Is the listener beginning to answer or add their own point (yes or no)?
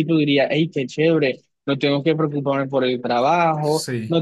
no